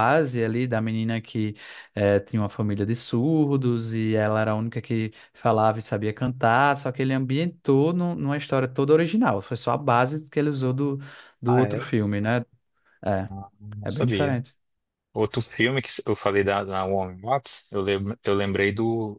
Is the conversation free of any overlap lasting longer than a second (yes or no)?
yes